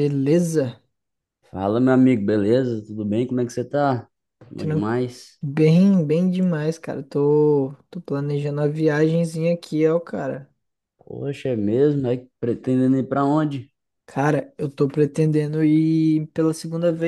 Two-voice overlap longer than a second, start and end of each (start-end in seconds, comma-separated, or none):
none